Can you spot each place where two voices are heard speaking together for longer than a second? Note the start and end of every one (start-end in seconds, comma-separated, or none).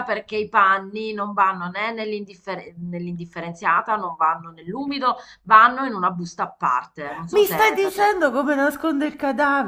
7.3-8.7